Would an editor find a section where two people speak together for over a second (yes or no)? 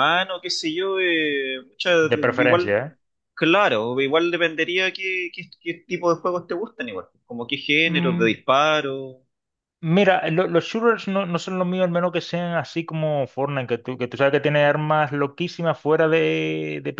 no